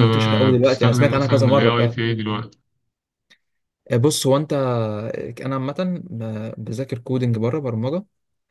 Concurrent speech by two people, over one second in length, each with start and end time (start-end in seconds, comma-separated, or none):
0.6-2.0